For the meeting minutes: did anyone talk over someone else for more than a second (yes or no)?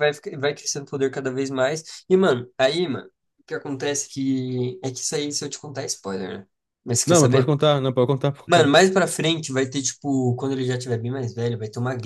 no